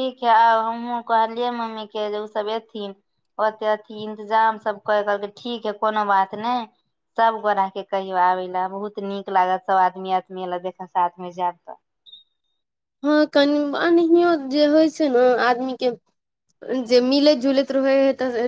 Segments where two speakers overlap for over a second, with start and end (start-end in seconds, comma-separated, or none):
none